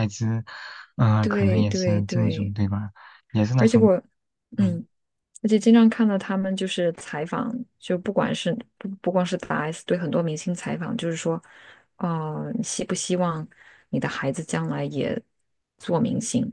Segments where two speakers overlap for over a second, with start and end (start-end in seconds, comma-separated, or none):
1.2-2.5